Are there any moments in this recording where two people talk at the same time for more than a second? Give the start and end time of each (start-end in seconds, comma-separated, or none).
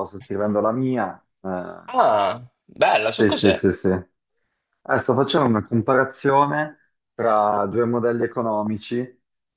none